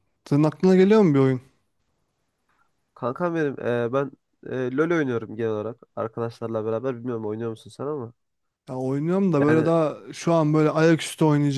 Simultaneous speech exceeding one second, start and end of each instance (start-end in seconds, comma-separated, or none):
none